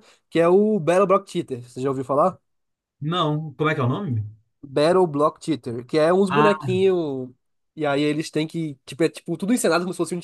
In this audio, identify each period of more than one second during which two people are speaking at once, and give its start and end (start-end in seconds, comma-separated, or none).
none